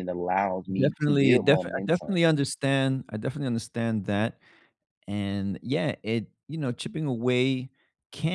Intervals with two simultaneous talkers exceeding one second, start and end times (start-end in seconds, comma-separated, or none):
0.7-2.2